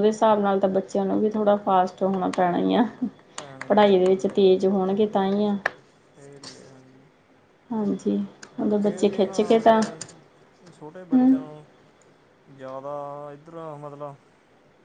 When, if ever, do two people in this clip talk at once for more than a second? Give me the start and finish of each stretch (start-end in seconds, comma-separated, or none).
8.6-9.8